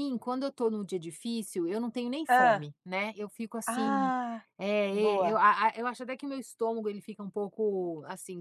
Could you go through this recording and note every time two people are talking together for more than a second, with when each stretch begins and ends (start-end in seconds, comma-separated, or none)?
none